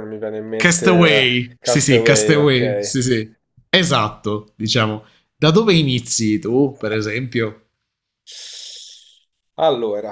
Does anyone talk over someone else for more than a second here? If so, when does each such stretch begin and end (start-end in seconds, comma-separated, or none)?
0.6-3.0